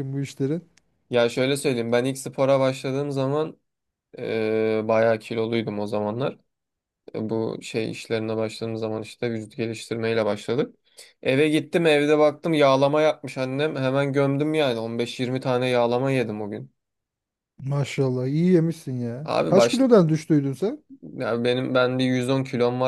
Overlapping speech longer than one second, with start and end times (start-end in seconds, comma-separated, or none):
none